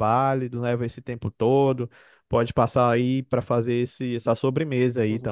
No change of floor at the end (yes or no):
no